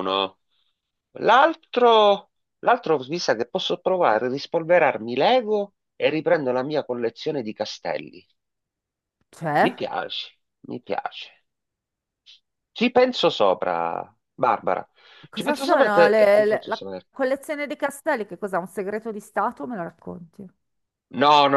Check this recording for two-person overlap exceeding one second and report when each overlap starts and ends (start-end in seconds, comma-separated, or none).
15.3-17.1